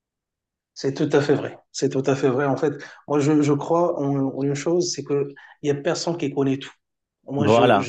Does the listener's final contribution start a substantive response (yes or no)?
no